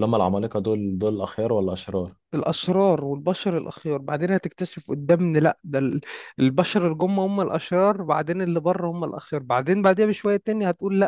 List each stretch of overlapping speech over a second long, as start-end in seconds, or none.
none